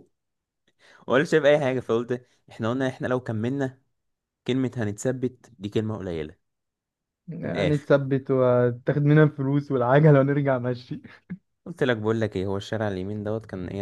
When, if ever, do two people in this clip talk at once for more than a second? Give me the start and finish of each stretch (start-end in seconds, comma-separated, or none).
none